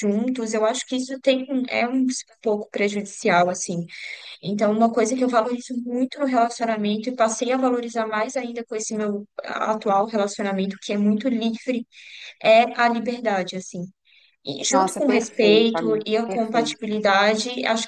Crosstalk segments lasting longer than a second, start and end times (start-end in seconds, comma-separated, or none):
14.7-16.9